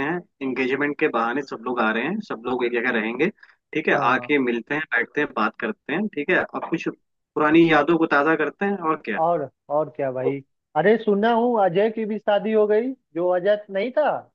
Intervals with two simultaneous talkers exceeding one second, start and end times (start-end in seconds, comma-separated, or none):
none